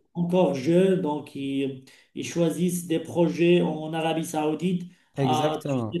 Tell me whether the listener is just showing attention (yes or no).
yes